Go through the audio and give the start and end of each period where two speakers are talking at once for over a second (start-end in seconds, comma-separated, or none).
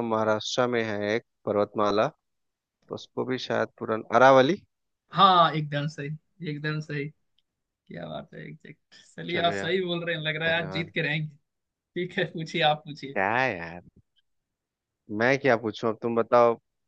none